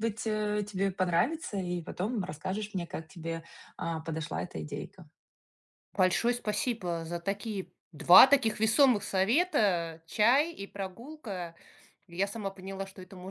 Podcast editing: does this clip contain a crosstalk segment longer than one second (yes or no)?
no